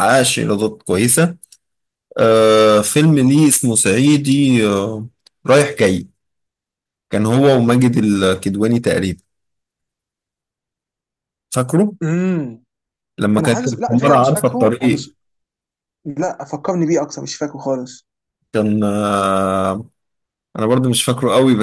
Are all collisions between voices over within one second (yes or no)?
no